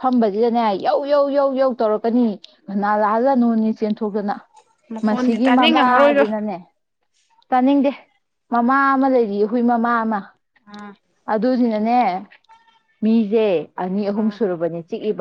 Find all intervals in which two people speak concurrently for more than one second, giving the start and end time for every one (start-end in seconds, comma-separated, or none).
5.0-6.2